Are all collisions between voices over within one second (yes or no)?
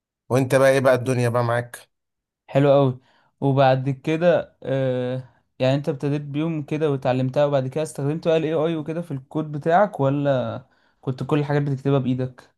yes